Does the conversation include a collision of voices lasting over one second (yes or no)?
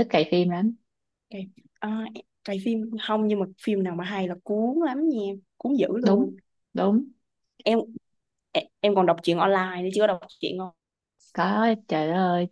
no